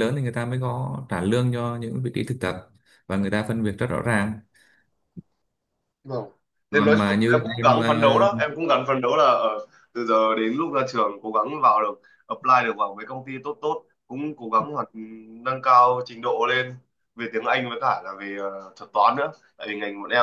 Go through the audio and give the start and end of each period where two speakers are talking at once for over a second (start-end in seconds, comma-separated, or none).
6.7-8.3